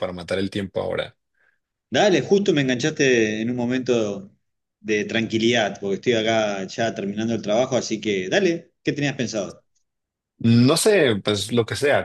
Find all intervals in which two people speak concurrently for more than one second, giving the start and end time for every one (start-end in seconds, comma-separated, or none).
none